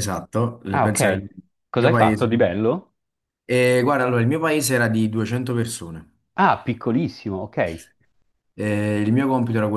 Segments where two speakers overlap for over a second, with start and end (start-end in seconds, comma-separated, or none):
none